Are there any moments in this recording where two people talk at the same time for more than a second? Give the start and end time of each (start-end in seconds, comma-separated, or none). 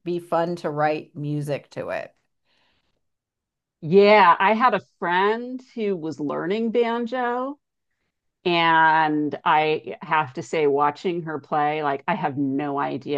none